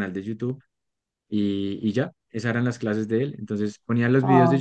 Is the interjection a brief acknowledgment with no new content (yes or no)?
yes